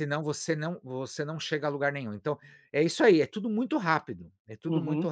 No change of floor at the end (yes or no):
yes